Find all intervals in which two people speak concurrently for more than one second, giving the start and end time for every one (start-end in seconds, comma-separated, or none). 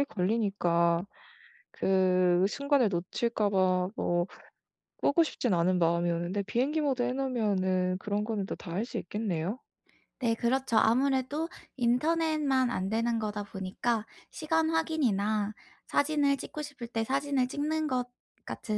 none